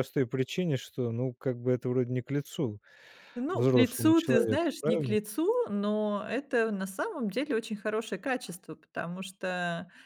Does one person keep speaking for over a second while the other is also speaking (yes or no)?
yes